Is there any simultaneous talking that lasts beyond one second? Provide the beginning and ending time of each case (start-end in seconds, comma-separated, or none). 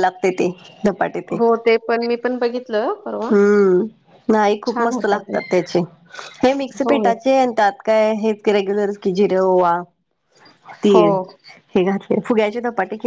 none